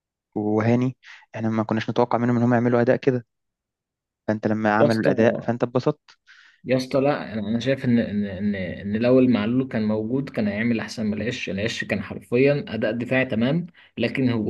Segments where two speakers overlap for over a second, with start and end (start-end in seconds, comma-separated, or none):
none